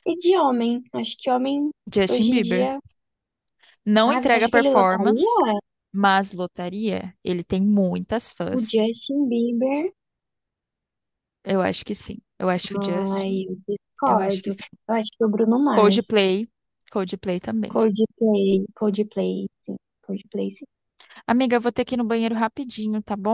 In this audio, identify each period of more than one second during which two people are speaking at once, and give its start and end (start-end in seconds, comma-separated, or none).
4.0-5.4